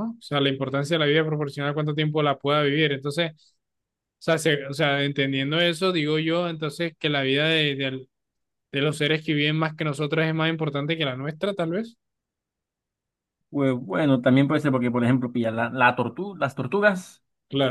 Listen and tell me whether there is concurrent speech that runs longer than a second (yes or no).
no